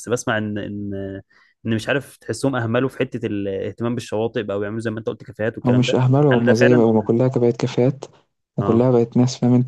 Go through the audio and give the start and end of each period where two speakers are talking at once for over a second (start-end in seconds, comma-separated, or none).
5.7-7.1